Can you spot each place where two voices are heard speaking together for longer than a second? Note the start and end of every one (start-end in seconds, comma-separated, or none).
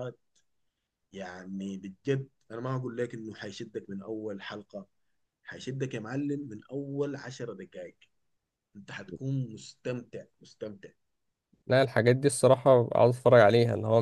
none